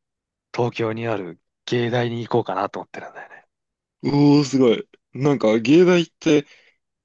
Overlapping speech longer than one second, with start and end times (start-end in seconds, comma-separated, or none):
none